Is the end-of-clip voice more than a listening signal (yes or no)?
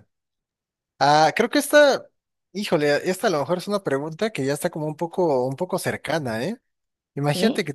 no